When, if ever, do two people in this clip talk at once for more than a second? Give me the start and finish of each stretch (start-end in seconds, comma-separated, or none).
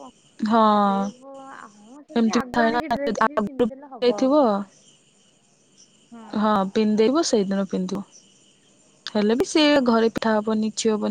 2.2-4.4